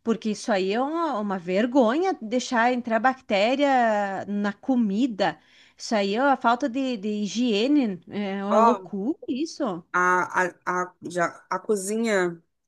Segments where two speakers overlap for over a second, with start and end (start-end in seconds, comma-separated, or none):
none